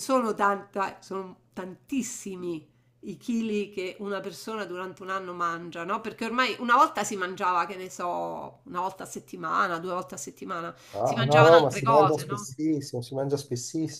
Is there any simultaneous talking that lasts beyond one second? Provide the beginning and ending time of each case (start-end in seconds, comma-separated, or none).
10.9-12.4